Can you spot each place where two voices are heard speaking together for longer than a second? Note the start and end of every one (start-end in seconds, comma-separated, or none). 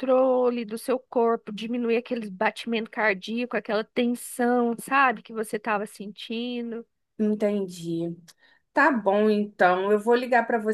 none